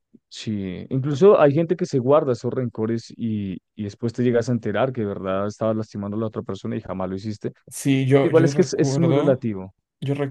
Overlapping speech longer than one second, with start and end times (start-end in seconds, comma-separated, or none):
8.2-9.5